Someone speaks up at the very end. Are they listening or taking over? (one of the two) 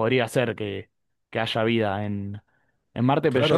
listening